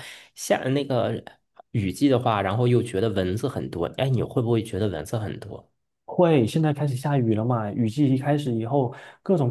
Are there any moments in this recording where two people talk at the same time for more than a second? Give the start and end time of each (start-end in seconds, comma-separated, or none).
none